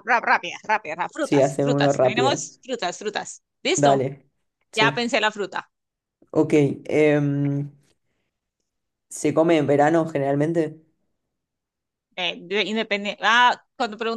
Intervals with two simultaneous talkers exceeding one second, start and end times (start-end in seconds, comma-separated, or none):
1.2-2.4